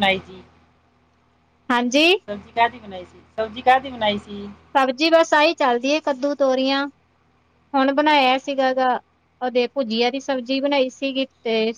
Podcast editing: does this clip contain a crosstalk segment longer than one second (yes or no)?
no